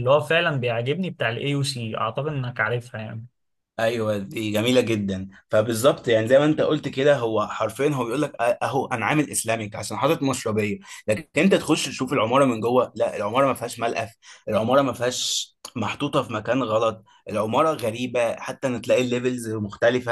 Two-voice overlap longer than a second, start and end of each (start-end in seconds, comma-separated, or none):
none